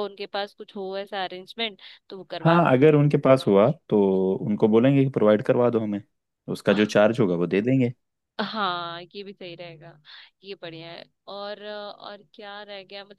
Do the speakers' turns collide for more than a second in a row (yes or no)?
no